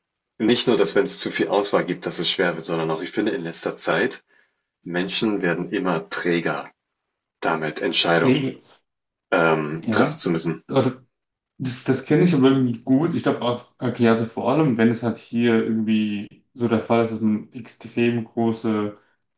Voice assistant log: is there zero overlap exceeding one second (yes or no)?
yes